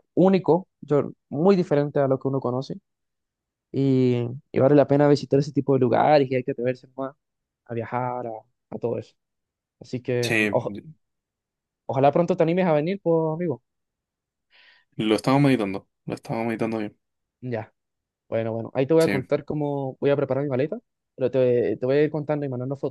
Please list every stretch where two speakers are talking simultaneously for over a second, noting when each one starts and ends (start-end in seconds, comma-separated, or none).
none